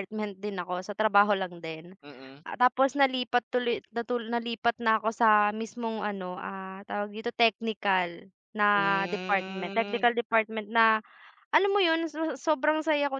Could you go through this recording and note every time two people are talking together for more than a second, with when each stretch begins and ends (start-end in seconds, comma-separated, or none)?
8.7-10.0